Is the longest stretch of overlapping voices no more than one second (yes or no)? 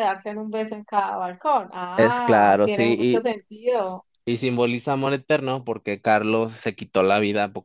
no